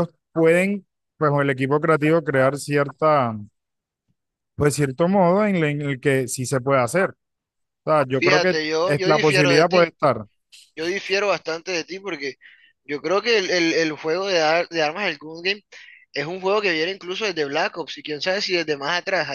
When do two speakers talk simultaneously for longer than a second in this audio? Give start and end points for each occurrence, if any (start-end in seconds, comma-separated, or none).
8.2-9.9